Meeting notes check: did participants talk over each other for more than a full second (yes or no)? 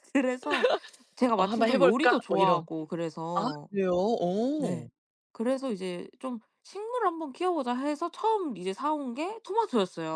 yes